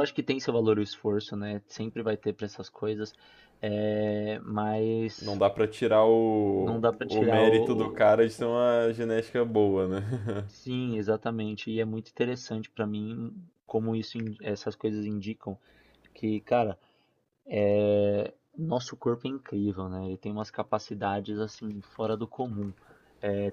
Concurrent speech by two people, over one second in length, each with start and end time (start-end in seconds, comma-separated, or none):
6.6-8.1